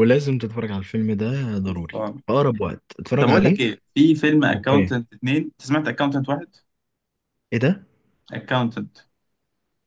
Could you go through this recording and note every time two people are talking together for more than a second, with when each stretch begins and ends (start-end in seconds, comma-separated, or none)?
none